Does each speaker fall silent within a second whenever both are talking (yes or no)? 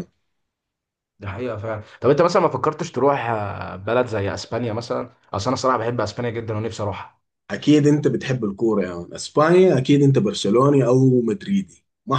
yes